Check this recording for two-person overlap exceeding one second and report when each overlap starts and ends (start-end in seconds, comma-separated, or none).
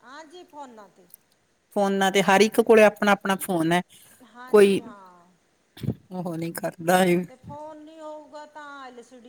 none